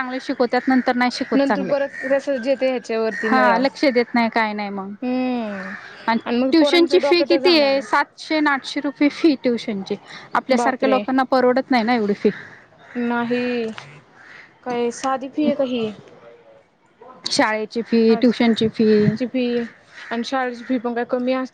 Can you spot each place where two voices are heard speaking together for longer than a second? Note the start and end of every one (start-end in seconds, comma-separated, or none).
6.4-8.1